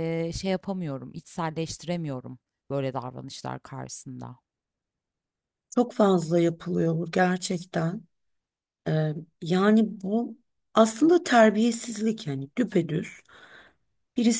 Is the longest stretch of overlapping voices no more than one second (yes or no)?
yes